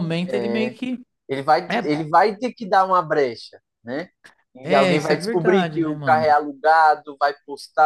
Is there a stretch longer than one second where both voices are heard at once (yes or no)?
yes